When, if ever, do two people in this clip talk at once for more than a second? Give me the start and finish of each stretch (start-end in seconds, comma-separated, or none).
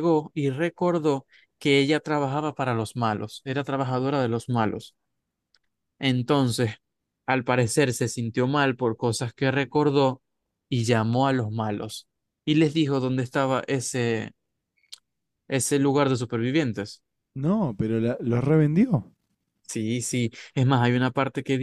none